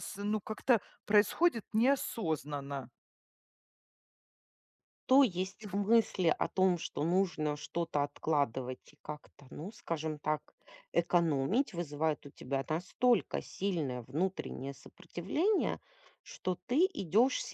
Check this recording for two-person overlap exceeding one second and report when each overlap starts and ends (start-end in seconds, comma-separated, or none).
none